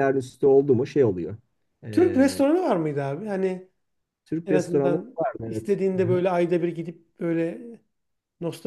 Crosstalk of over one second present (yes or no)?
yes